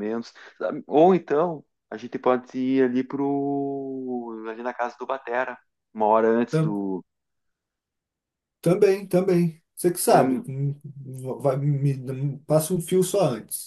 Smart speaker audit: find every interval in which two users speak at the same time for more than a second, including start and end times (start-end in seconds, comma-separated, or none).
none